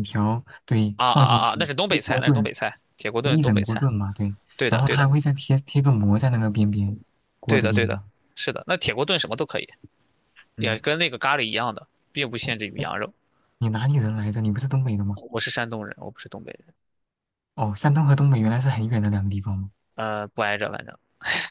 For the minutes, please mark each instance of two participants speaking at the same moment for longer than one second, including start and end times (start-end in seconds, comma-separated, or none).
1.0-2.5